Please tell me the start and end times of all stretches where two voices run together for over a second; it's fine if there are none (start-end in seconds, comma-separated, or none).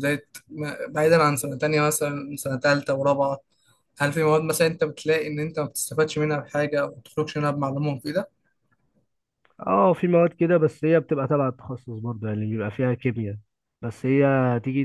none